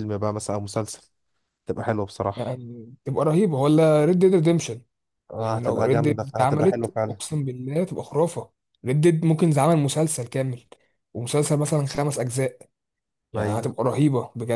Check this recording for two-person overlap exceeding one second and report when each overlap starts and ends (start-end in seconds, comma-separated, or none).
5.3-7.2